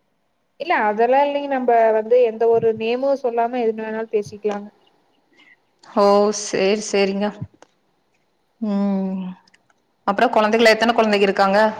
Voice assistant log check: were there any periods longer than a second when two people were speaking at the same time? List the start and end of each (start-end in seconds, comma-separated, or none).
none